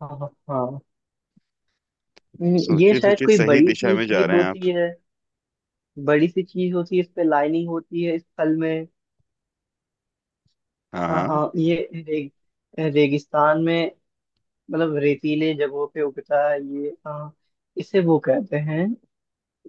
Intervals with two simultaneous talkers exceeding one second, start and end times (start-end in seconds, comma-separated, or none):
2.6-4.7